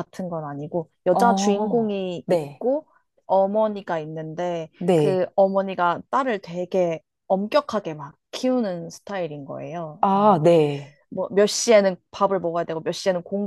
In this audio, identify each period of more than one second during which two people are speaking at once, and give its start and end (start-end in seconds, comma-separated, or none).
1.1-2.6